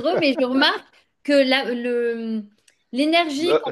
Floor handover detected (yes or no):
no